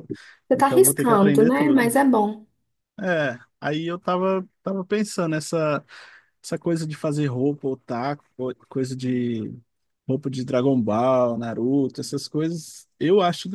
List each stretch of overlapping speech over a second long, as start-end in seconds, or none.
0.5-1.9